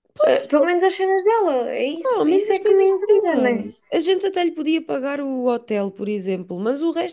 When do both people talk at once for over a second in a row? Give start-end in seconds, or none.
2.0-3.7